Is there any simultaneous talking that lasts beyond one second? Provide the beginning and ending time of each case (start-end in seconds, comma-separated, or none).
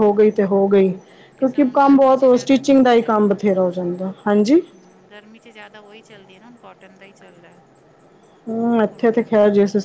1.4-3.5